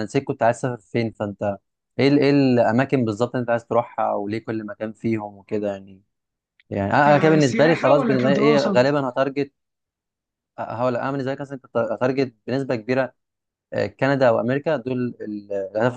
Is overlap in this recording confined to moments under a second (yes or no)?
no